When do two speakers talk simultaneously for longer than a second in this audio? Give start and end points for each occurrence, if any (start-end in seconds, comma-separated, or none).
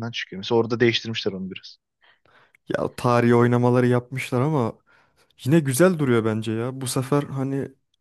none